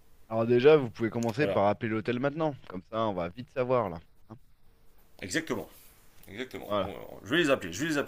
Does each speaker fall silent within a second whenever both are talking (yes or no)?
yes